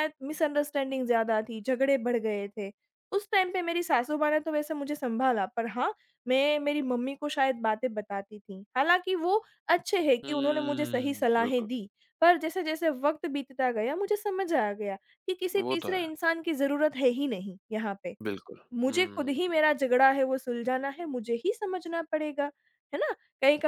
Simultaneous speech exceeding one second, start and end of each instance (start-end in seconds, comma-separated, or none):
10.2-11.7